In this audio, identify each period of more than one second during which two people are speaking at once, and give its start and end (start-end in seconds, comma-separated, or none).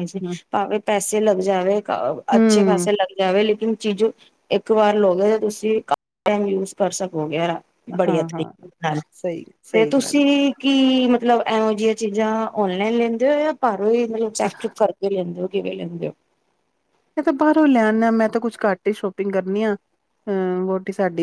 none